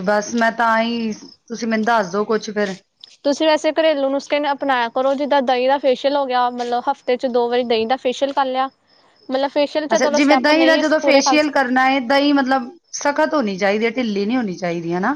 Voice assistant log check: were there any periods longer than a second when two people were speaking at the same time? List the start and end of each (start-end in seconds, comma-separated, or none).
9.9-11.5